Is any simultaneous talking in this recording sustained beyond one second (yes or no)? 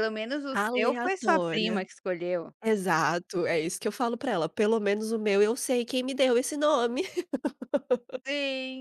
yes